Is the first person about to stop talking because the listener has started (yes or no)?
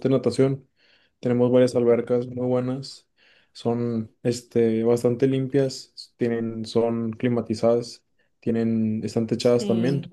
yes